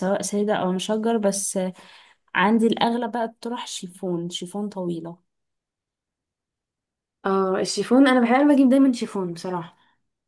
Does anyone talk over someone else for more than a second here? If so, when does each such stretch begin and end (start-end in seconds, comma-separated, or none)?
none